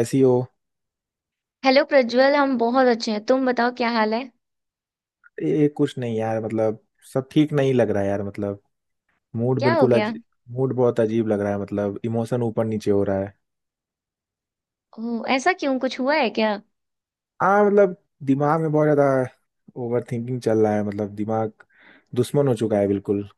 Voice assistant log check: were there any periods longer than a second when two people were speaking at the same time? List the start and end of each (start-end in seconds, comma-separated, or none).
none